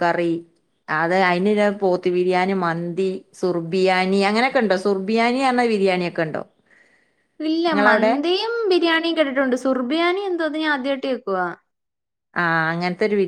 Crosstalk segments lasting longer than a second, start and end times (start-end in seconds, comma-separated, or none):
none